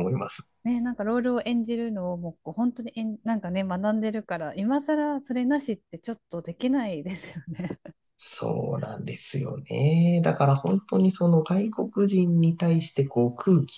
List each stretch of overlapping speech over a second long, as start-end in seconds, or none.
none